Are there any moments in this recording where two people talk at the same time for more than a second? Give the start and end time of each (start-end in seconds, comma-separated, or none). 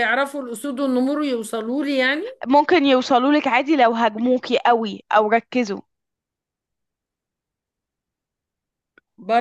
none